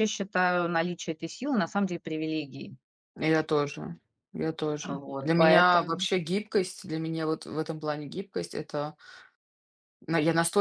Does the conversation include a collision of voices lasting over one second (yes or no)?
yes